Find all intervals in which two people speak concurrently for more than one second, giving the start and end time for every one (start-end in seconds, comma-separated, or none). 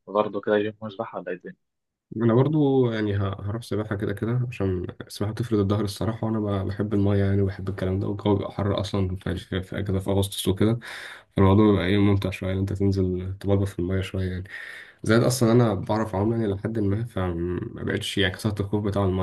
none